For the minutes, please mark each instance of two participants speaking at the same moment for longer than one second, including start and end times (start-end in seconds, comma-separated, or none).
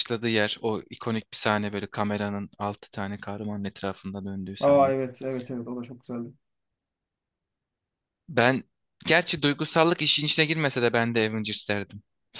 none